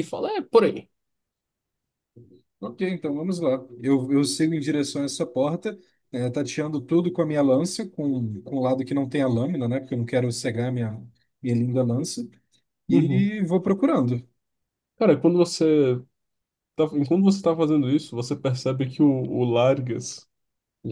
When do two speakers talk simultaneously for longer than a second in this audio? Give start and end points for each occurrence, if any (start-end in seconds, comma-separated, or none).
none